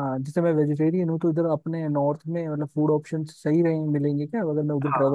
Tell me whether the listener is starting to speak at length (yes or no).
yes